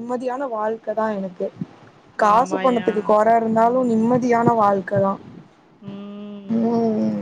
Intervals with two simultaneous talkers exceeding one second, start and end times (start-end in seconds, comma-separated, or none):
none